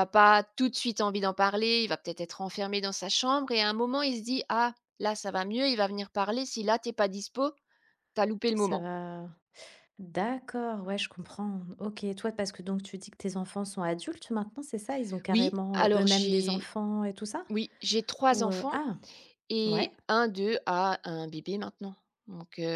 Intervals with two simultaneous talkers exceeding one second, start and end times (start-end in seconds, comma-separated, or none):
15.3-16.7